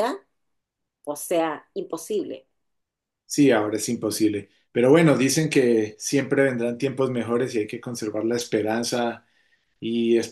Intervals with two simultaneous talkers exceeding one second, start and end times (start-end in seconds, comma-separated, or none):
none